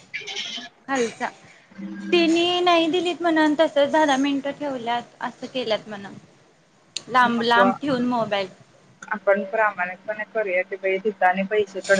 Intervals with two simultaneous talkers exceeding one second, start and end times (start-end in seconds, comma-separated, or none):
none